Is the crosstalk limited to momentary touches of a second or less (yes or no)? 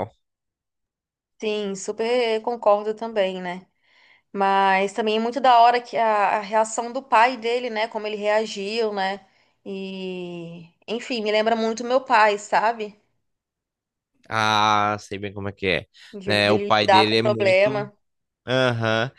no